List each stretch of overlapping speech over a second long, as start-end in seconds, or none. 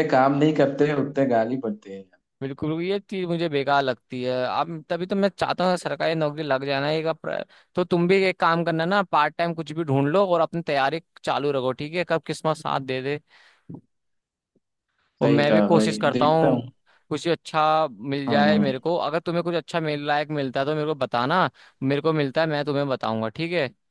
15.2-16.6